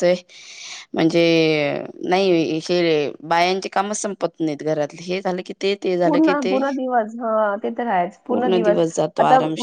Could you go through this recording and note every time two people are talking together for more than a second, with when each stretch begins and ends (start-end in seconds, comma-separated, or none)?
none